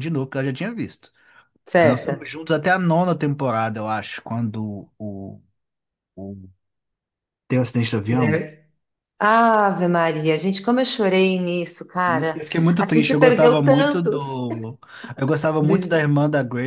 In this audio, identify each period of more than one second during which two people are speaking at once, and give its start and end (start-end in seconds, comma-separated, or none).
12.3-14.4